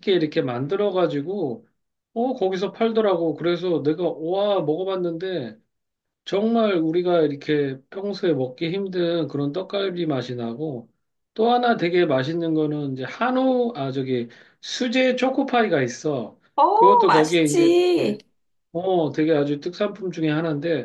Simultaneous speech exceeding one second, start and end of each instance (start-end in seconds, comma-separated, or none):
16.6-18.2